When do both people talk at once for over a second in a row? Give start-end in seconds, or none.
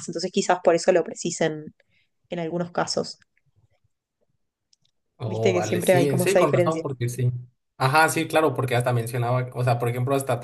5.3-6.8